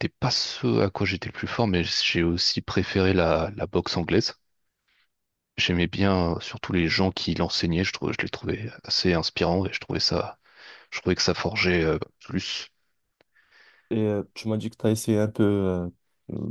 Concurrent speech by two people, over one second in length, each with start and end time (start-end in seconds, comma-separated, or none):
none